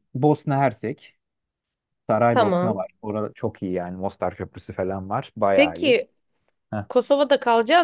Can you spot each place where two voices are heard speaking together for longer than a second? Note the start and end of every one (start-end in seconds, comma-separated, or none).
none